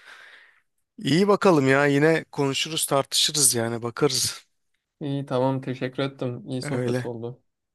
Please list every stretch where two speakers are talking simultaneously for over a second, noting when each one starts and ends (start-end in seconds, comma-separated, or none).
none